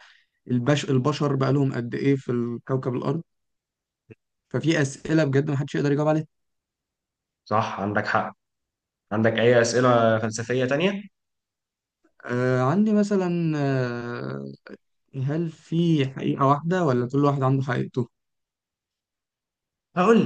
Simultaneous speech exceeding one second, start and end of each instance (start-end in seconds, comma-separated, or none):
none